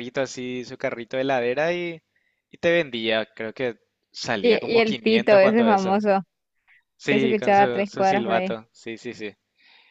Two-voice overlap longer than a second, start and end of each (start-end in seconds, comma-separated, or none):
4.4-6.0, 7.1-8.6